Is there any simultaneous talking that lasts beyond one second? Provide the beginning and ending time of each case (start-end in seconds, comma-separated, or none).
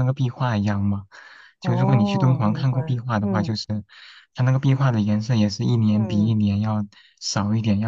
1.6-3.5